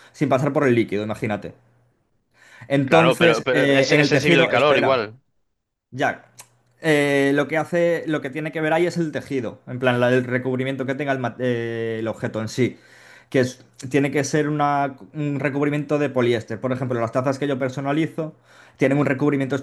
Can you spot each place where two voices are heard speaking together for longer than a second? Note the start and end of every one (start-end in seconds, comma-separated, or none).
2.9-5.0